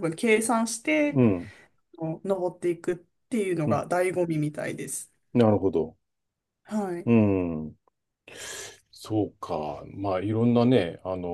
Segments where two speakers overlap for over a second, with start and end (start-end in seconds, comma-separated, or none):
none